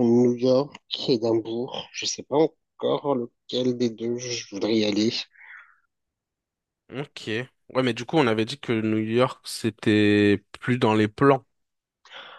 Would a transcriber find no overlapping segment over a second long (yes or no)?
yes